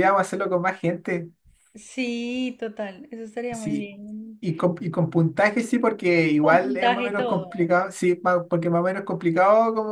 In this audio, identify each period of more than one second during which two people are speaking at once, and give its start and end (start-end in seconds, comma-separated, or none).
6.4-7.7